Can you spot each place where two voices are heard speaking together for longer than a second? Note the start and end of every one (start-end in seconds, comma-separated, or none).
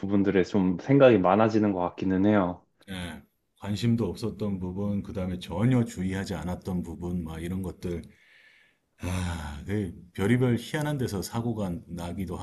none